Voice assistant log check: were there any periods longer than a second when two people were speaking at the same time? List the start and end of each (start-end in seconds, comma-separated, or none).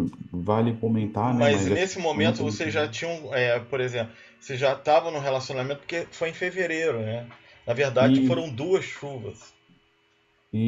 1.2-2.5